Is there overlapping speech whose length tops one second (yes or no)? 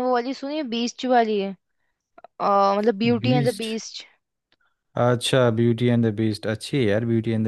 no